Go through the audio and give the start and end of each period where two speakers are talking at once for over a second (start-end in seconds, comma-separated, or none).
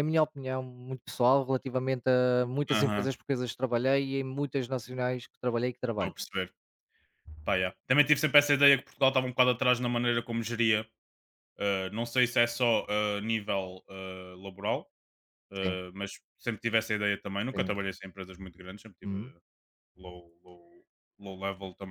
none